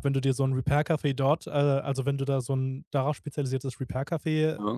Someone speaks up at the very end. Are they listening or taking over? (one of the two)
listening